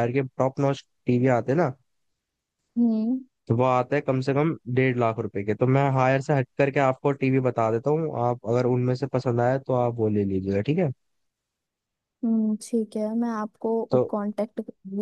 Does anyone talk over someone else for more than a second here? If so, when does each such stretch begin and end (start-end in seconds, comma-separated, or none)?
none